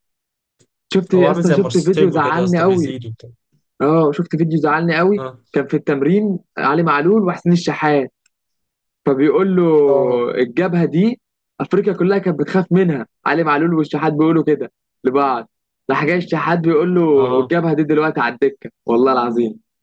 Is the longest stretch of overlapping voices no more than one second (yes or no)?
no